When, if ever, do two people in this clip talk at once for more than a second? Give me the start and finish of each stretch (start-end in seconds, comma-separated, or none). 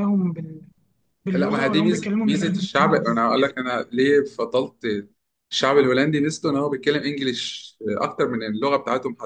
1.3-3.2